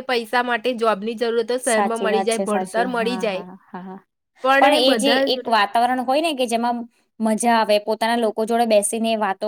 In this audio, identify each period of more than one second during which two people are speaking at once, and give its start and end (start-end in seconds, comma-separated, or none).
1.7-3.4